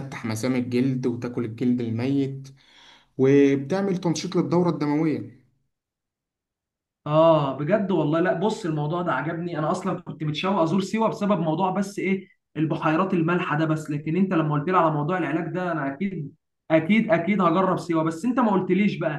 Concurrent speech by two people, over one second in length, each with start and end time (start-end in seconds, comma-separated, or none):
none